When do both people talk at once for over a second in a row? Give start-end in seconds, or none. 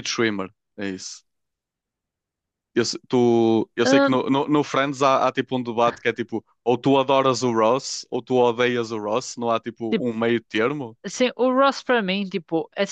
none